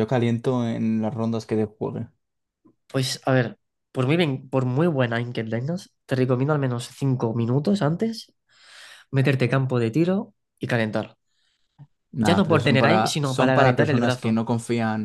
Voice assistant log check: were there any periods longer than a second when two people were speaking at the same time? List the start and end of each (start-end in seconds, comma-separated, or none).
12.2-14.4